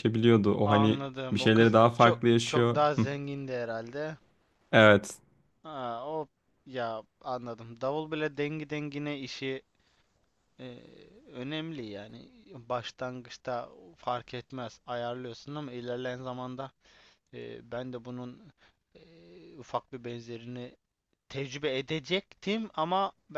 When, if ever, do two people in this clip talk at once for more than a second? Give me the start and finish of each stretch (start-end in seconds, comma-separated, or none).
0.7-3.1